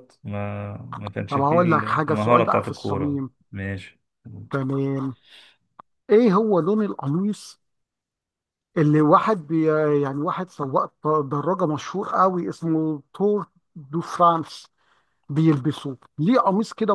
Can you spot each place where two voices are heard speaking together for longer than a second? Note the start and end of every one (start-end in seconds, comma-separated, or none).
1.3-3.3